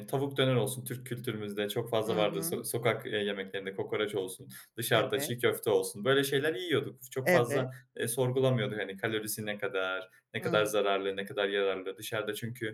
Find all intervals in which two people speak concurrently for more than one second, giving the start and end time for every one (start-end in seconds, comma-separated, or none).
none